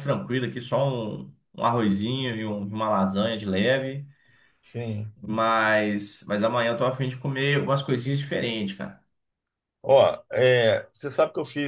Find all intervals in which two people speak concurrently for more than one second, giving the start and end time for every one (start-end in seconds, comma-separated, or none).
none